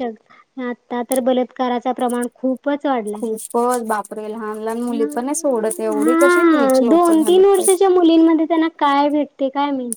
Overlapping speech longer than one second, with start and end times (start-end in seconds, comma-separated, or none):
6.0-7.6